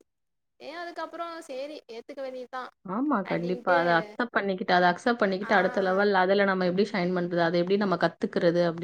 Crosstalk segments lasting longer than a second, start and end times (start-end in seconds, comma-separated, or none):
none